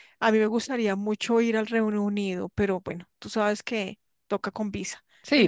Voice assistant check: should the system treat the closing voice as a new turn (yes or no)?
yes